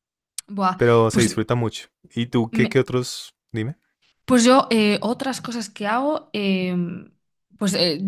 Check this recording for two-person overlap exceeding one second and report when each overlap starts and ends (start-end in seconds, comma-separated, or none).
none